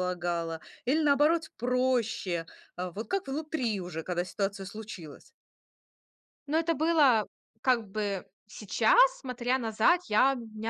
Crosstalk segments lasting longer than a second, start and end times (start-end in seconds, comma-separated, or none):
none